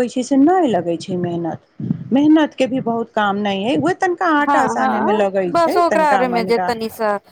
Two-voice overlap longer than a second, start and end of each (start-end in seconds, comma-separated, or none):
4.5-6.7